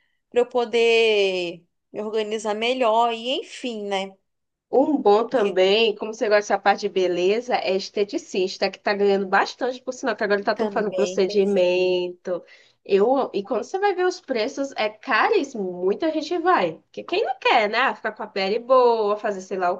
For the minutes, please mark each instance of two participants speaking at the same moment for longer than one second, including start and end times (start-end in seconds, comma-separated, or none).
10.5-12.0